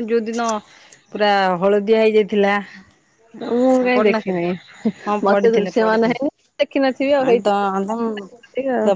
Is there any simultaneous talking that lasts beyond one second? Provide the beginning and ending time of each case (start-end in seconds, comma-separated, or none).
5.3-7.7